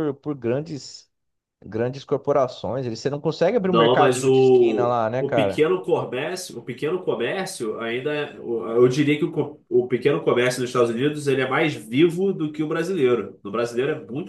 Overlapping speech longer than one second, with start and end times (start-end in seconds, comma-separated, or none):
3.7-5.7